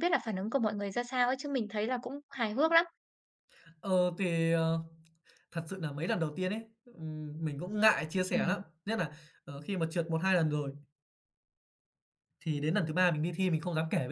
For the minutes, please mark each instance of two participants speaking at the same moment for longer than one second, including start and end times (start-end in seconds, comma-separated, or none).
none